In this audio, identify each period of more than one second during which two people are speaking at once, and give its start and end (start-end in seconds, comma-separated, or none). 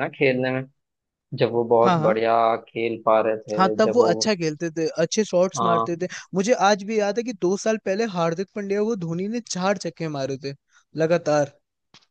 none